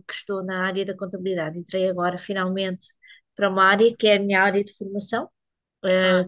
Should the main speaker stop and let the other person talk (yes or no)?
no